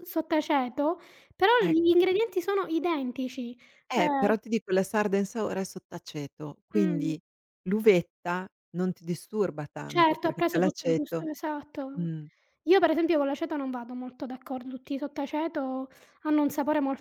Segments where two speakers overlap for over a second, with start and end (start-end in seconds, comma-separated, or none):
9.8-11.3